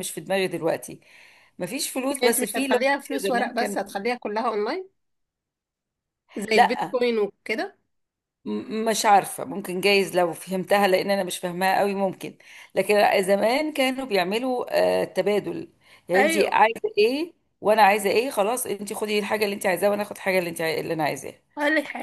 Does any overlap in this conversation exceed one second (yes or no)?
yes